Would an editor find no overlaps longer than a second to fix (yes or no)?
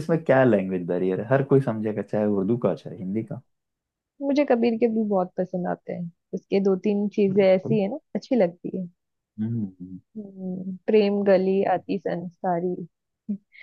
yes